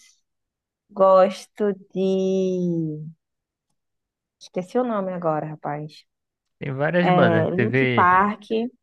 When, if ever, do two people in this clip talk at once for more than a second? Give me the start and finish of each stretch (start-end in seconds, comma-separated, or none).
7.0-8.2